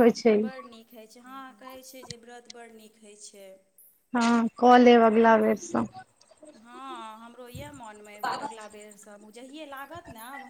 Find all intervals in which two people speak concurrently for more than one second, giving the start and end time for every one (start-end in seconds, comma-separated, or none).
none